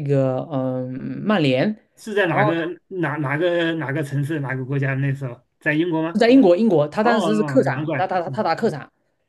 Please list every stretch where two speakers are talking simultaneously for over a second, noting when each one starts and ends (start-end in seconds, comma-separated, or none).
7.0-8.5